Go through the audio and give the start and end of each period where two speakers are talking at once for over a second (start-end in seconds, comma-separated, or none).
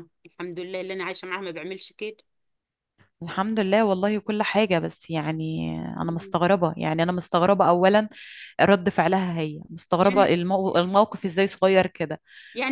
none